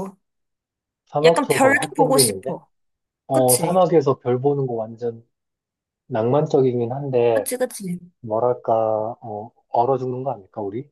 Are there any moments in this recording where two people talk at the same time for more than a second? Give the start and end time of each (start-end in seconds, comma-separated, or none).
1.2-2.6